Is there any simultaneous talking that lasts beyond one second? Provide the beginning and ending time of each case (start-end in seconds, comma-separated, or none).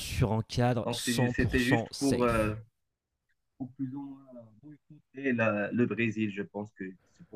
0.8-2.5